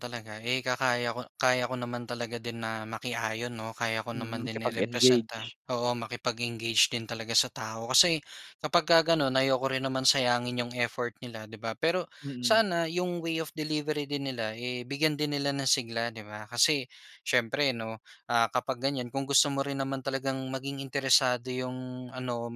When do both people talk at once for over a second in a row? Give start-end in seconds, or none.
4.1-5.5